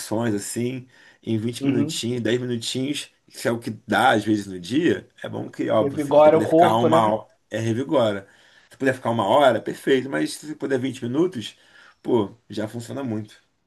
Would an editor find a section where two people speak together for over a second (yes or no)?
yes